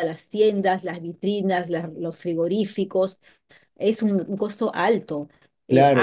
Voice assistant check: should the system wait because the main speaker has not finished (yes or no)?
no